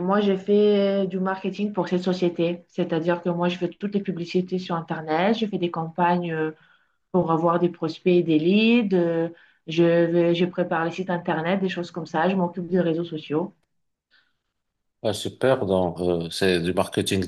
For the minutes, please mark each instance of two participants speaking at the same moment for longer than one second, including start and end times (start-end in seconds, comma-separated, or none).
none